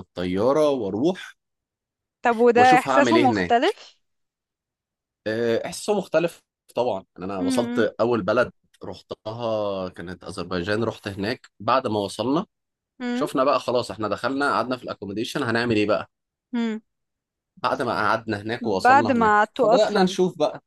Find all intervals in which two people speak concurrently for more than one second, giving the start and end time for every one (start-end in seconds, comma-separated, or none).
2.5-3.8, 18.6-20.2